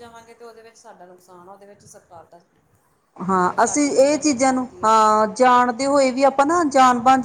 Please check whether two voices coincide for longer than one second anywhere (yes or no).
yes